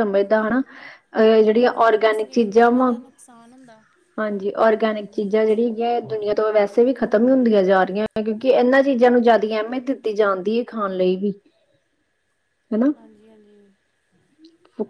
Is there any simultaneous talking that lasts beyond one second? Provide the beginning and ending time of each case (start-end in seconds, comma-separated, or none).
1.5-2.9